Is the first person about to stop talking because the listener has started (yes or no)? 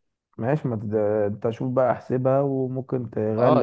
yes